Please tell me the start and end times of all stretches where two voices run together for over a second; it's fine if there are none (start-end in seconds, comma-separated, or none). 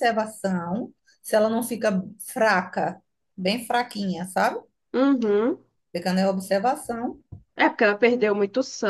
none